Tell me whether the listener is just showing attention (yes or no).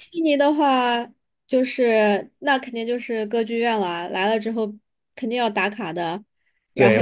no